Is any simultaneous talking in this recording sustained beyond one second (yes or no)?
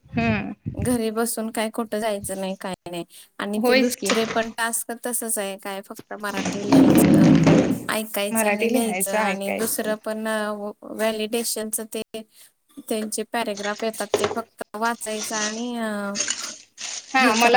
yes